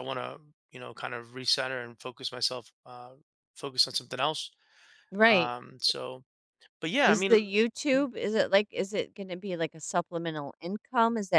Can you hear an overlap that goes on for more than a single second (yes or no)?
no